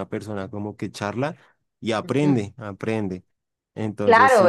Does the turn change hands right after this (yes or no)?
yes